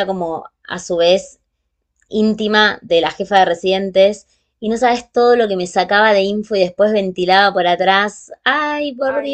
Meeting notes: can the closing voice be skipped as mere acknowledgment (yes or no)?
no